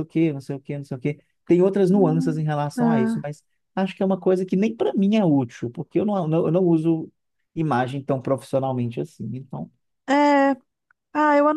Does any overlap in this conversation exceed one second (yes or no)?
yes